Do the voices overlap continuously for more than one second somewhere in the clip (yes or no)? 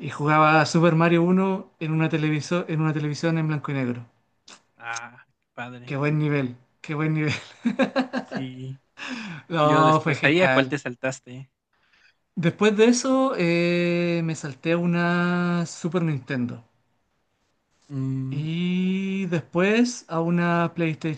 yes